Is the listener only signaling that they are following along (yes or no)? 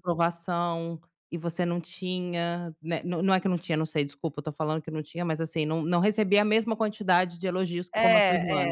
no